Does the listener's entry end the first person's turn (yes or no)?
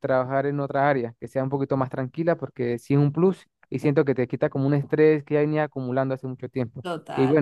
yes